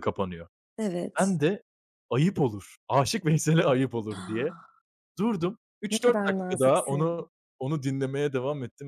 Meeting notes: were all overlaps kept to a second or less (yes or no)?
no